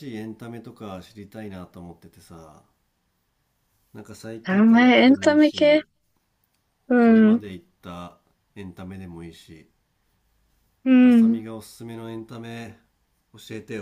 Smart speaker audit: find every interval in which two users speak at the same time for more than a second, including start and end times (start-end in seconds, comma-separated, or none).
4.5-5.8